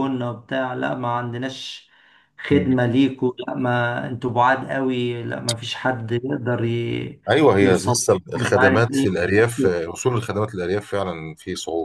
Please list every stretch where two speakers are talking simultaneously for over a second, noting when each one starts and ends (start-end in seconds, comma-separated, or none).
7.6-9.3